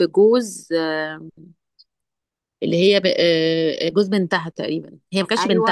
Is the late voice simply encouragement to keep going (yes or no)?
no